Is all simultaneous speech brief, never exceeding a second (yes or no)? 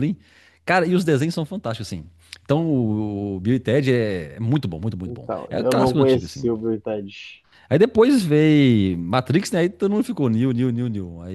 no